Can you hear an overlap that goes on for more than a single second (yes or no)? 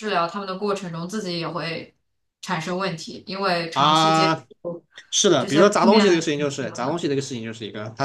yes